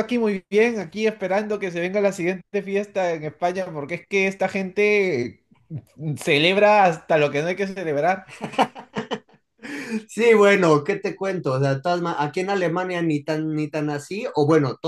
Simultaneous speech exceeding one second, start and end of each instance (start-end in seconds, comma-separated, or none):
none